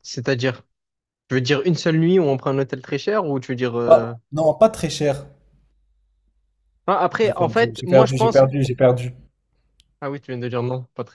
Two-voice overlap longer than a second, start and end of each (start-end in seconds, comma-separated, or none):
7.2-8.5